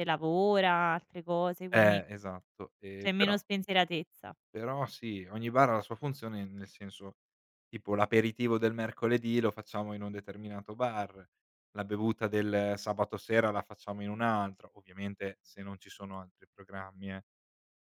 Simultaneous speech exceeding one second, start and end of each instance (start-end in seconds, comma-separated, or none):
none